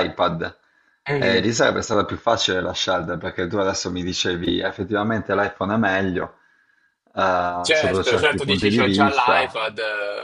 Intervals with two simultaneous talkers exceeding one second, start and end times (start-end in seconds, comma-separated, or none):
7.6-9.6